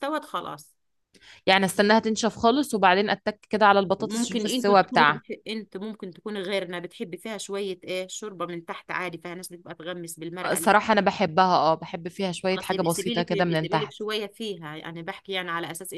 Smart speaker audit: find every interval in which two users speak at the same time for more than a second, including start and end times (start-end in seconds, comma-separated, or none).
4.0-5.2, 12.5-14.0